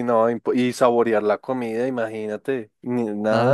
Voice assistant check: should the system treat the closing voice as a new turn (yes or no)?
yes